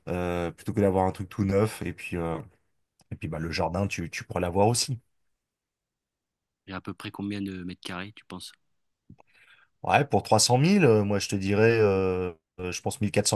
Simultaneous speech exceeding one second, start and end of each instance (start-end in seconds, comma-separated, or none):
none